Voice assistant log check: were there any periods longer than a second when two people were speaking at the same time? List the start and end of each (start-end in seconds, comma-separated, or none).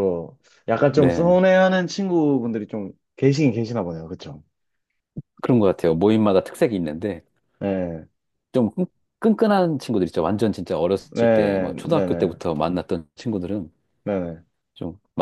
11.1-12.3